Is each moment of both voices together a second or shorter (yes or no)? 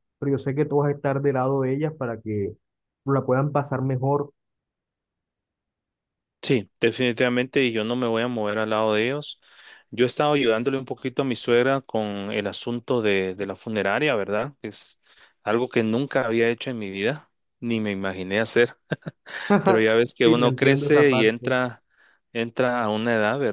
no